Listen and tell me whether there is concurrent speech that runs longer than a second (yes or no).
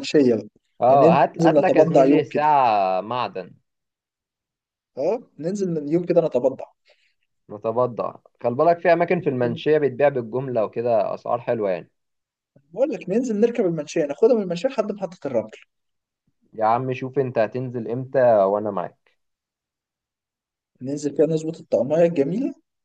yes